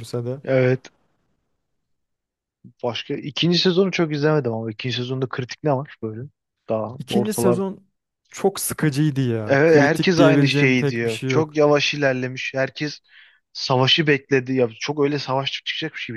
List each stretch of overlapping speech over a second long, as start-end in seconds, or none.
9.5-11.6